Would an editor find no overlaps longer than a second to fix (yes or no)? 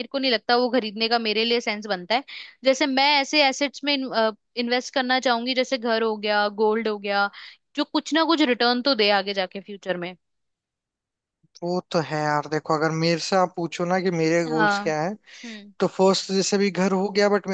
yes